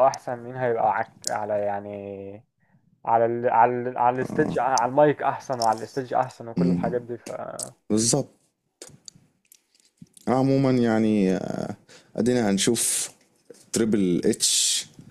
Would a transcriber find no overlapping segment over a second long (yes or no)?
yes